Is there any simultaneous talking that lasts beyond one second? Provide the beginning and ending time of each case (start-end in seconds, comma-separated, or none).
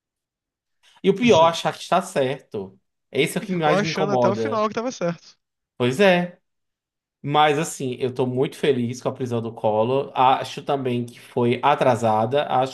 3.4-4.7